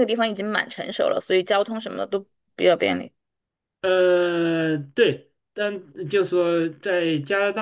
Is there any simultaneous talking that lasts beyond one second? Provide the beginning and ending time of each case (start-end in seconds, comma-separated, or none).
none